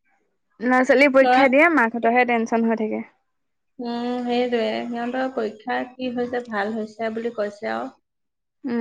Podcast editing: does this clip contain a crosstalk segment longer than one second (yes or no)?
no